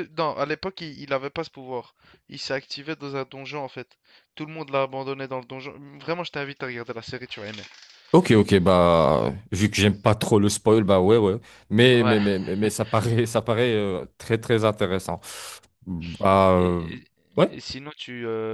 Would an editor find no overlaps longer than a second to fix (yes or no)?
yes